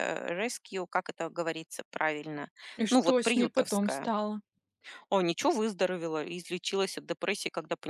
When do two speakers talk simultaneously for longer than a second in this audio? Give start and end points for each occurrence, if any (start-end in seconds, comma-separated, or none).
2.9-4.1